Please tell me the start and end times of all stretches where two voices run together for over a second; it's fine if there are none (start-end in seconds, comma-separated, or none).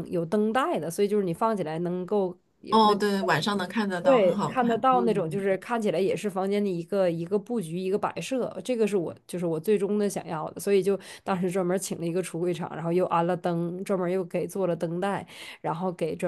4.0-5.4